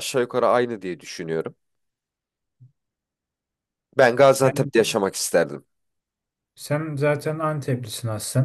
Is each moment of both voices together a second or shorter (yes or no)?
yes